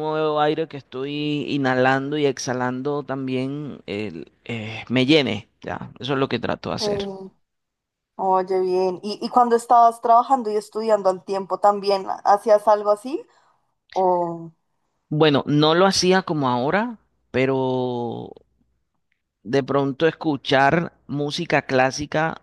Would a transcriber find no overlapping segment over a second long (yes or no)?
yes